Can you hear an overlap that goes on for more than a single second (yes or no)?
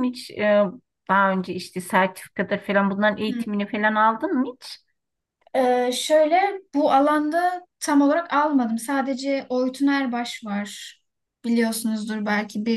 no